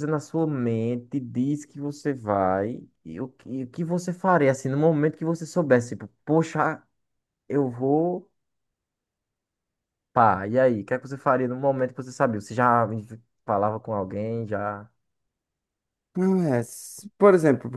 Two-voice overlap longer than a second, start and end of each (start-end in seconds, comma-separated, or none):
none